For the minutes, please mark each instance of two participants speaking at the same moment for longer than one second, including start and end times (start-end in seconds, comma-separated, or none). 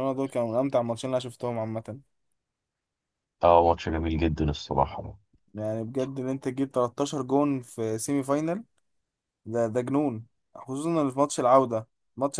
none